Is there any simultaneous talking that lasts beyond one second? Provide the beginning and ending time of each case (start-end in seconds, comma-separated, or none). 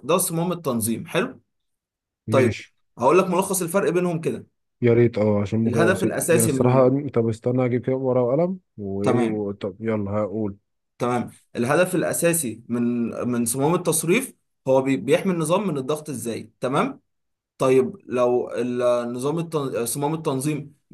5.7-6.9